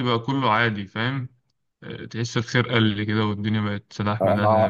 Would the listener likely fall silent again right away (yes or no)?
no